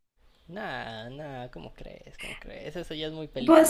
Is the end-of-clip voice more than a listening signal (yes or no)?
yes